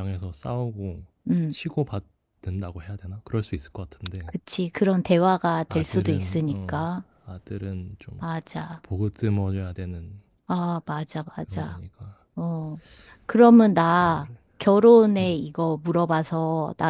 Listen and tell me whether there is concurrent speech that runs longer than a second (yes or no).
yes